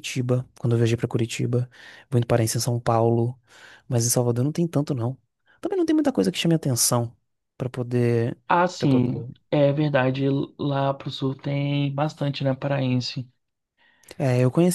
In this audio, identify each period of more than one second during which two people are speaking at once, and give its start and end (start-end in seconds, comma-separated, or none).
none